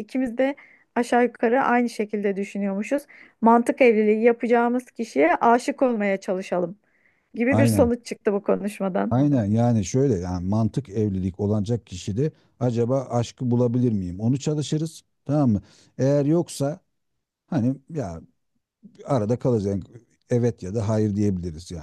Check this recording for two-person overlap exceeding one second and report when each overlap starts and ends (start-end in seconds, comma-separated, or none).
none